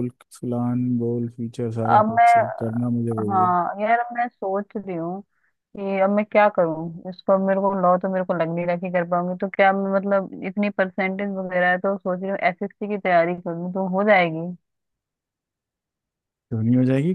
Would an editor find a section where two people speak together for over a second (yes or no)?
no